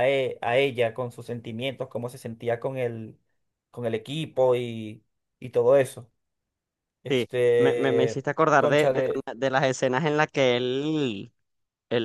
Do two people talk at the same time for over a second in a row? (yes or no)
yes